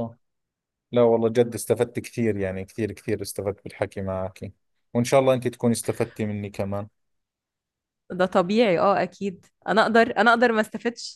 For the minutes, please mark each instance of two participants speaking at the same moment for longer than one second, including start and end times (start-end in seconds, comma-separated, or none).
none